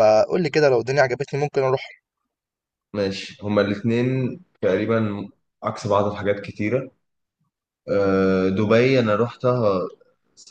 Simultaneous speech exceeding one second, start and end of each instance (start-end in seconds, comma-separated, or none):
none